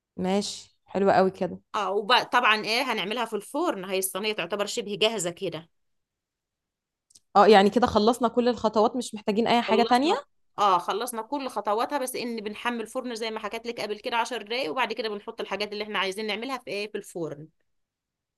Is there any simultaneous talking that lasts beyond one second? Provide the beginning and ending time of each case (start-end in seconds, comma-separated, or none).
none